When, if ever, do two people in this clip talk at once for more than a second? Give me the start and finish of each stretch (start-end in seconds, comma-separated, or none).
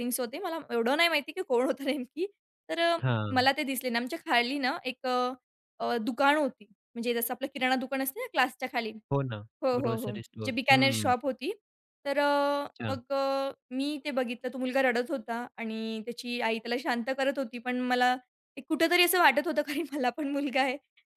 9.8-11.1